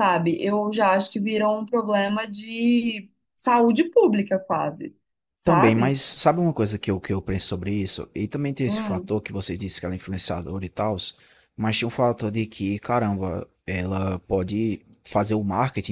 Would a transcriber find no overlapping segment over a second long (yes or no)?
yes